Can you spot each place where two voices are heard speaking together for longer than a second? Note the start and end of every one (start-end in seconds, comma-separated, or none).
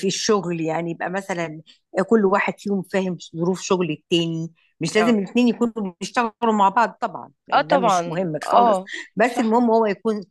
7.5-9.6